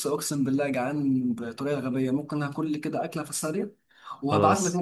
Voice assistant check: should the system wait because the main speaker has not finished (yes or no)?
yes